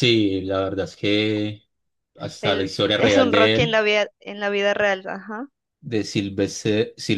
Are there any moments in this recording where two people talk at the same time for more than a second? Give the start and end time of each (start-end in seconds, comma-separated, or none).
2.4-3.8